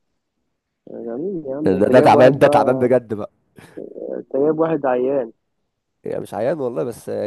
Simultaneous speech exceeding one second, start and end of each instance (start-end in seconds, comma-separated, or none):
1.6-2.9